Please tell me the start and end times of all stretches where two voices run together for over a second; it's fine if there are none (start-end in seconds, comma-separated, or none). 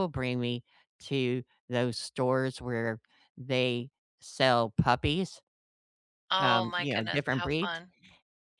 6.4-7.8